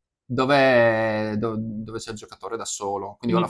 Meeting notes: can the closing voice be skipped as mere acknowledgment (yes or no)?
yes